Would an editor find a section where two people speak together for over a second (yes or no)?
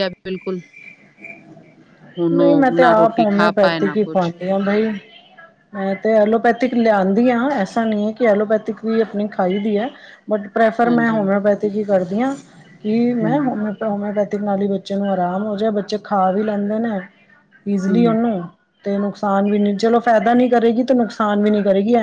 yes